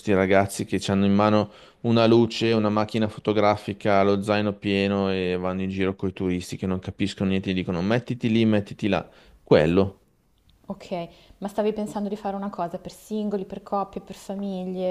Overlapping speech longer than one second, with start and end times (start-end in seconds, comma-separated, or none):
none